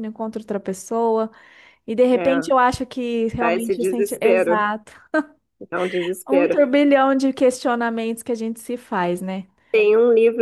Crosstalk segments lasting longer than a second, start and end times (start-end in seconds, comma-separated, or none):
3.4-4.6